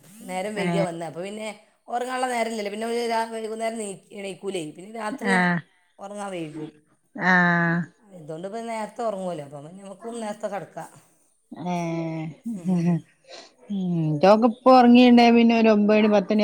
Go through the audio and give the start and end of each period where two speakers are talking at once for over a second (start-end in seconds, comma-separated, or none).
none